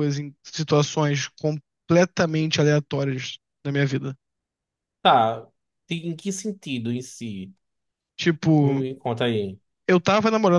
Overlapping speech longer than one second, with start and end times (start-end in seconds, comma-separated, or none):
none